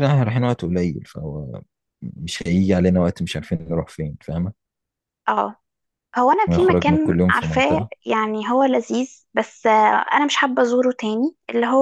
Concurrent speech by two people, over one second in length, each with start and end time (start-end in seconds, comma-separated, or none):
6.5-7.9